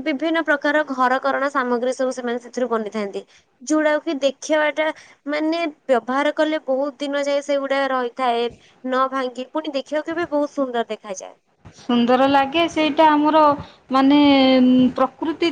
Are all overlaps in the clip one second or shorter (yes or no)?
yes